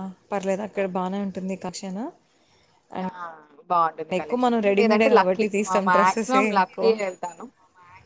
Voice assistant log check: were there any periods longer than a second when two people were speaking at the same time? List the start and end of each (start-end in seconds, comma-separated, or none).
4.7-6.9